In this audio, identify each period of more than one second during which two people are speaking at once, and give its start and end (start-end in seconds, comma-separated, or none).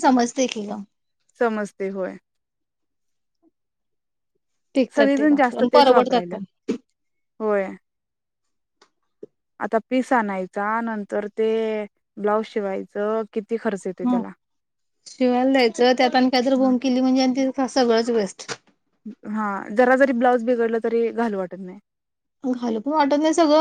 4.9-6.4